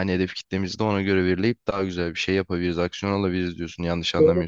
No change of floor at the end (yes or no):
no